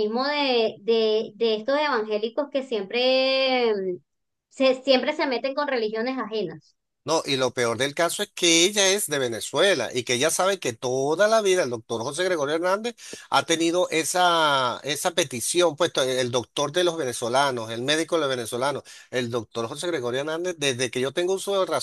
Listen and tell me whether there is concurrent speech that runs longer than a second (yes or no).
no